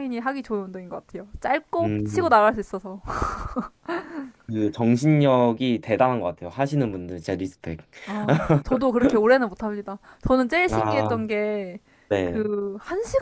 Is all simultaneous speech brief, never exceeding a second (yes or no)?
yes